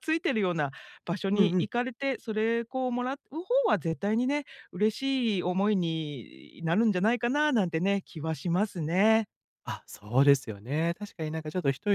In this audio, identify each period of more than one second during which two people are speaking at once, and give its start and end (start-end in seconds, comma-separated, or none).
none